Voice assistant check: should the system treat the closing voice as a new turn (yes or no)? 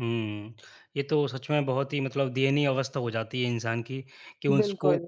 no